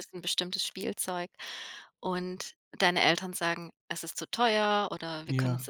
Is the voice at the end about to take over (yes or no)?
no